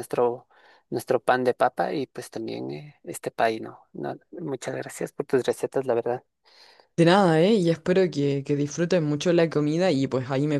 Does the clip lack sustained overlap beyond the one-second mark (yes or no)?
yes